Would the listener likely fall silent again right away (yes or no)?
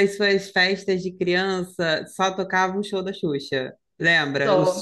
yes